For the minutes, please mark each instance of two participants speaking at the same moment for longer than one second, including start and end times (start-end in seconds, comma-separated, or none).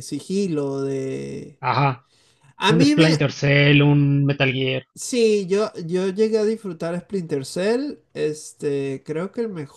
none